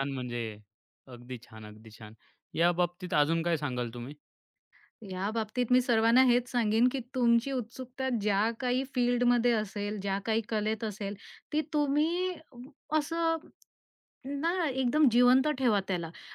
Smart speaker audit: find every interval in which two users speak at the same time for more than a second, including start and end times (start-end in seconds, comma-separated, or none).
none